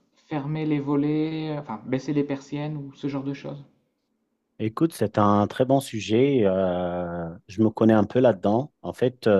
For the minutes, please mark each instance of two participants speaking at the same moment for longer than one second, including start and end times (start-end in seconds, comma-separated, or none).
none